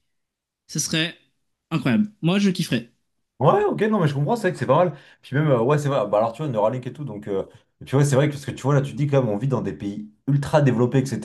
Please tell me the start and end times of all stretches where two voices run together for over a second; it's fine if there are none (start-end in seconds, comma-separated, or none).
none